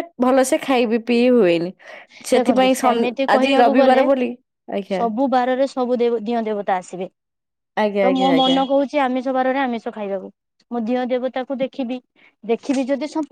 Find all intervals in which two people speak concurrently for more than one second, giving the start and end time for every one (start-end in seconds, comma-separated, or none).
2.3-4.0